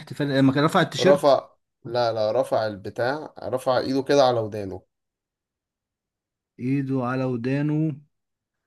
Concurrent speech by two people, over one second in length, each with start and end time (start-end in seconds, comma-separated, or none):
none